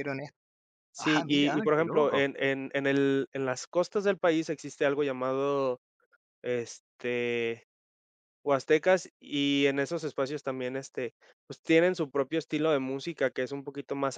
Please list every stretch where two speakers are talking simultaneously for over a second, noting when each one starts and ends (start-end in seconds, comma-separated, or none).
1.0-2.2